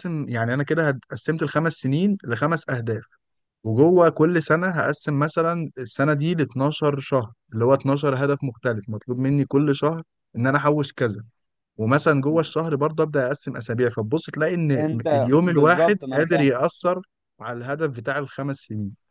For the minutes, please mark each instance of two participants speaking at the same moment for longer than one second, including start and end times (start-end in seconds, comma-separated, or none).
14.8-16.5